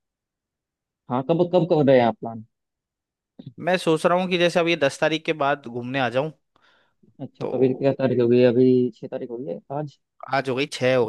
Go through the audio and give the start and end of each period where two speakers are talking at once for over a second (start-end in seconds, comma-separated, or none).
none